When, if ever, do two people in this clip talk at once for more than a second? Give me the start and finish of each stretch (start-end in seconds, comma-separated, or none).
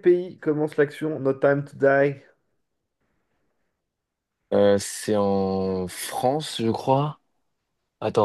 none